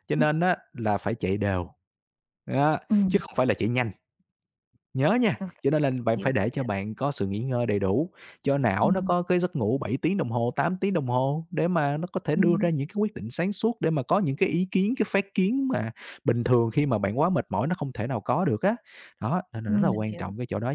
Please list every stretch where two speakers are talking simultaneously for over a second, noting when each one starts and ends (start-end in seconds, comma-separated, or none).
none